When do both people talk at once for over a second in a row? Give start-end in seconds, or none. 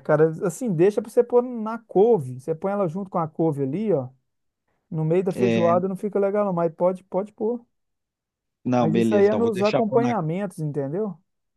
8.8-10.2